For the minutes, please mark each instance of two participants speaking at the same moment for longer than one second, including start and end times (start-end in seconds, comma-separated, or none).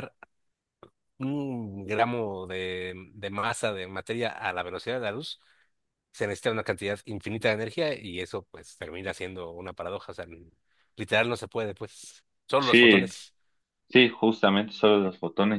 none